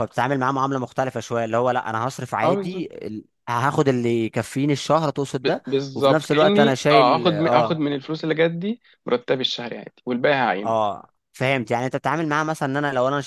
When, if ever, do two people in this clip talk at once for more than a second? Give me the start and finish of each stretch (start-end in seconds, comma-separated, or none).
5.4-7.8